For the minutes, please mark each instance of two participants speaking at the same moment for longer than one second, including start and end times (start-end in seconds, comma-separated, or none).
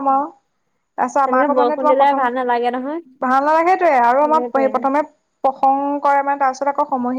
1.2-3.0